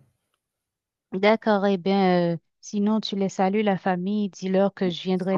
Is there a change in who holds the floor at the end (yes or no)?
yes